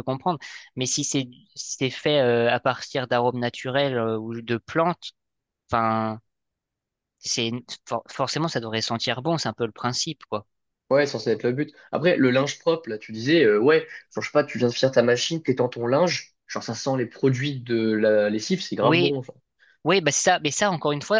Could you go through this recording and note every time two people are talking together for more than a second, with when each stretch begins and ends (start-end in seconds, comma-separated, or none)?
none